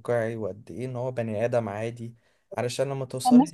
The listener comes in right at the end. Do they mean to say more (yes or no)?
yes